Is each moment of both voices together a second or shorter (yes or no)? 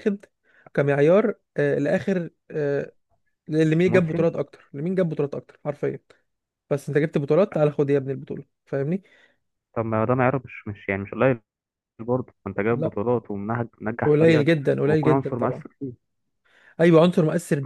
no